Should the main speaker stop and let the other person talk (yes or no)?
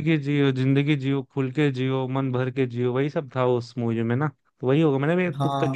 yes